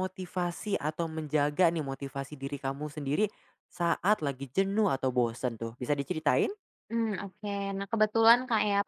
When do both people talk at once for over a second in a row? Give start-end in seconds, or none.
none